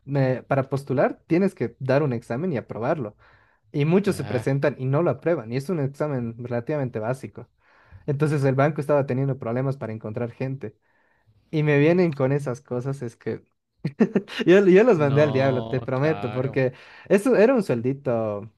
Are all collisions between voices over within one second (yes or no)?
no